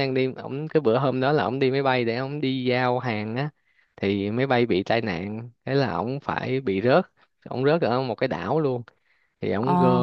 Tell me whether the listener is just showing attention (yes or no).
yes